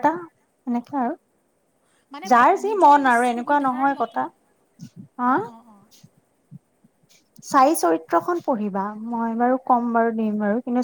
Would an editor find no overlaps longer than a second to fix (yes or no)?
no